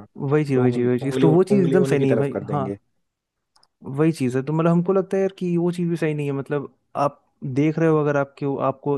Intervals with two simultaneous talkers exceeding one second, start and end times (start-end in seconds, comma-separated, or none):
0.6-2.7